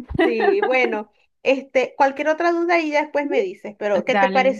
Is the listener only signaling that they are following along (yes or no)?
no